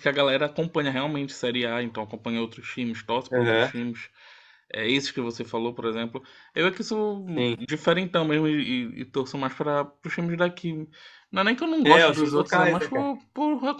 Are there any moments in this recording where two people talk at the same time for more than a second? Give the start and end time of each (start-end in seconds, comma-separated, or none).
11.8-13.1